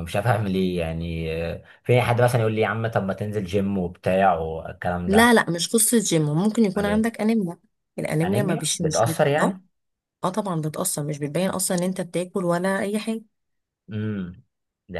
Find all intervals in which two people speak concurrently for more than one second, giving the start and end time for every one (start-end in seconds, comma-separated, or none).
8.2-9.6